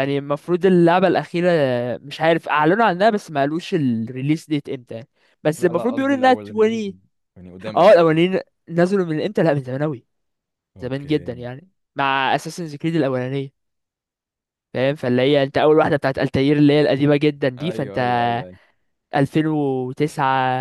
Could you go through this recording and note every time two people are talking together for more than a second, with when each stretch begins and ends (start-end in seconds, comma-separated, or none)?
5.6-7.0